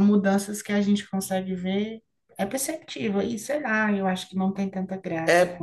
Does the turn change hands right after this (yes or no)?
yes